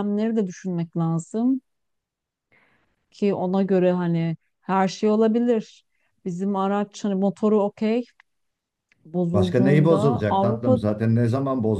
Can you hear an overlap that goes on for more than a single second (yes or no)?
yes